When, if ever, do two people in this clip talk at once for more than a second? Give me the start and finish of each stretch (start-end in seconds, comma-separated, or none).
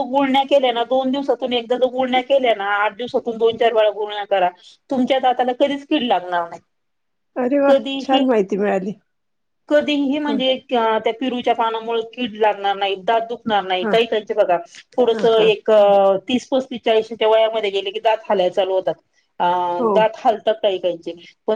none